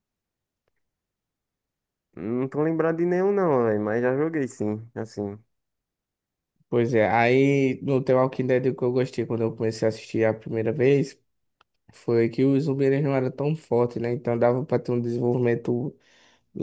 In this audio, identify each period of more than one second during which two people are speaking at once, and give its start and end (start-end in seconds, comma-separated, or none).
none